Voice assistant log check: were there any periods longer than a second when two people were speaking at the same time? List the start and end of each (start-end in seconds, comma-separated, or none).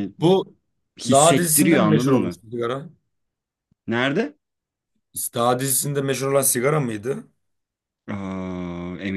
1.1-2.4